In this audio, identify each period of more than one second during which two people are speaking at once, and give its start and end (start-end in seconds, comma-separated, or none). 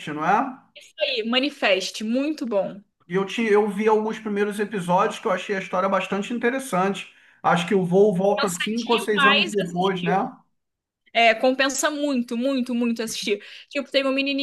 8.3-10.2